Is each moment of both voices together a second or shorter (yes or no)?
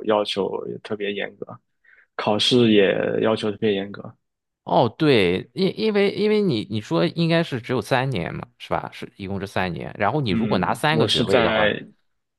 no